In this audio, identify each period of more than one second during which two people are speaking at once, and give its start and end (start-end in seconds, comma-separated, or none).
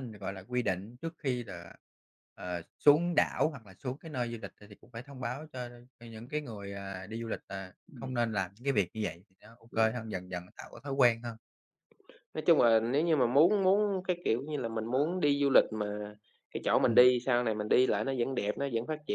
none